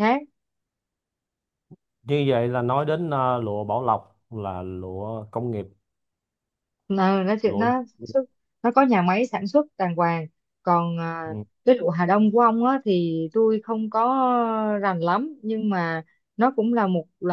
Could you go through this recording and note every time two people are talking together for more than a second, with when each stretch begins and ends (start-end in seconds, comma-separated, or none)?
none